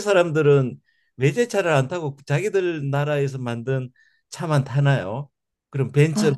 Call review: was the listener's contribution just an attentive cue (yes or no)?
yes